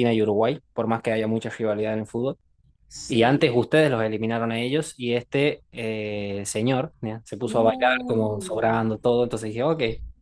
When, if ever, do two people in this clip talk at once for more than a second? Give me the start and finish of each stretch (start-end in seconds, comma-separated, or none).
7.4-8.7